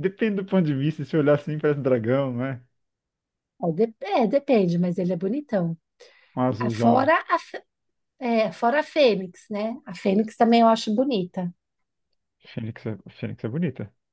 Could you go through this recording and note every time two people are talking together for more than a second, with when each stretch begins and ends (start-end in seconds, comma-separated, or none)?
none